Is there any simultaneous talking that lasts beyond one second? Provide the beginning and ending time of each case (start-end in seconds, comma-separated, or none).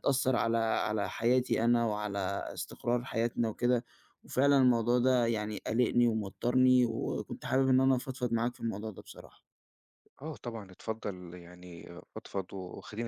none